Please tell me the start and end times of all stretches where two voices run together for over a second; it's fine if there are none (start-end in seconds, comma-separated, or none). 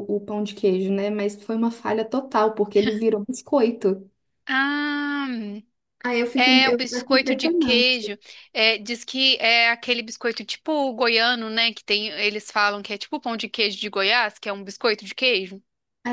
6.3-8.0